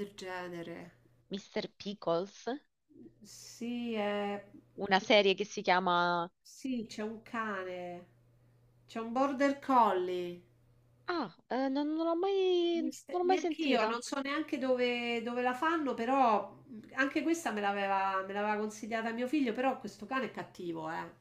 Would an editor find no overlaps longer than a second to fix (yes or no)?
no